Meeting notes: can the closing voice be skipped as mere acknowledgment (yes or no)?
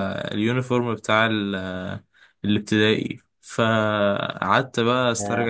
yes